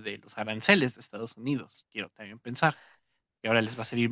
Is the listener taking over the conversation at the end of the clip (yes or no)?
no